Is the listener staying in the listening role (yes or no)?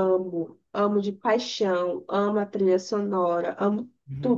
no